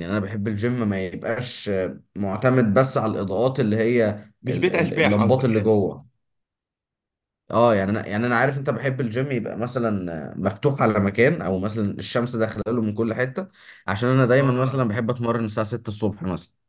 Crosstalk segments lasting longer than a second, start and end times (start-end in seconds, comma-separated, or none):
4.5-5.8